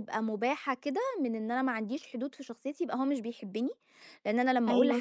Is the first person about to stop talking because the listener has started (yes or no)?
no